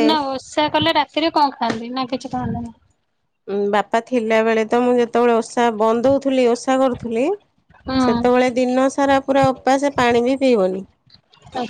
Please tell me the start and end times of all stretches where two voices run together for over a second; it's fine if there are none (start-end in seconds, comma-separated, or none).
none